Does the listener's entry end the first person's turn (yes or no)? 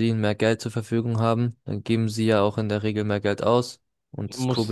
yes